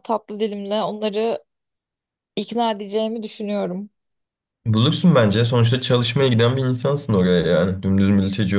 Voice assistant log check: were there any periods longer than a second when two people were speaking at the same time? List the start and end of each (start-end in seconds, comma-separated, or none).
none